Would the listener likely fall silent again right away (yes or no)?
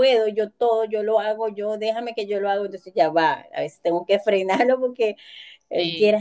yes